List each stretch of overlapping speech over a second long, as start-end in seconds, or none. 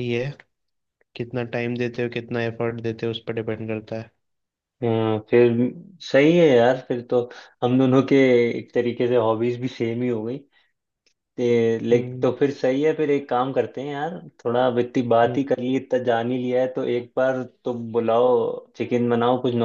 none